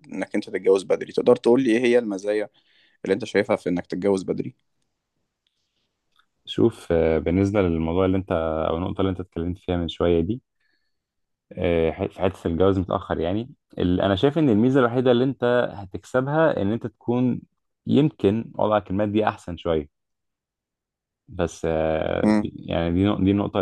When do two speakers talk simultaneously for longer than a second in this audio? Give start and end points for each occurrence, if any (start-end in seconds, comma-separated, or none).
none